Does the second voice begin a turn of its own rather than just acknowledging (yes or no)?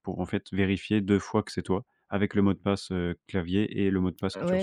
yes